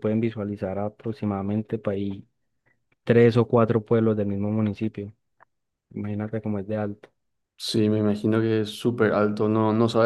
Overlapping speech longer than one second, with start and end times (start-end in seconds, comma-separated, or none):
none